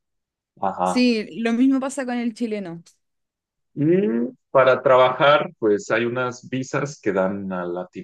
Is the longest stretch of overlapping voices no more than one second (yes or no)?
yes